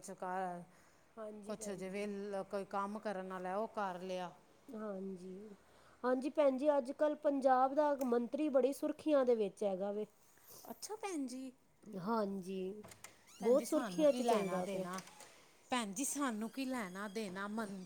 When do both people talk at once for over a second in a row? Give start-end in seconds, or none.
13.4-14.9